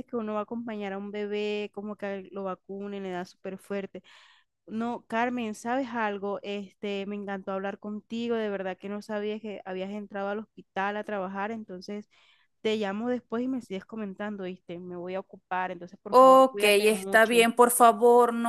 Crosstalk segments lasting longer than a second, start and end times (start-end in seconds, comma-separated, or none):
16.1-17.5